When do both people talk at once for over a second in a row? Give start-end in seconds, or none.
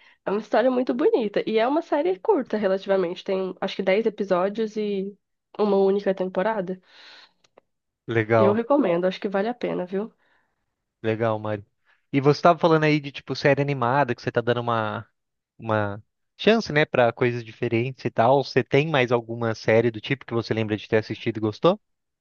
none